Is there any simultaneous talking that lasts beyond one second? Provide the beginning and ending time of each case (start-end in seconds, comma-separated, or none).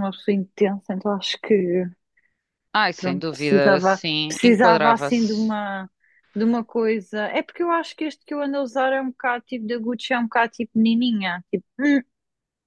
3.0-5.5